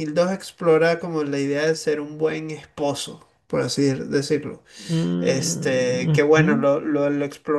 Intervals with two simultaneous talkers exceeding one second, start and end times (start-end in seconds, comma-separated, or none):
5.2-6.5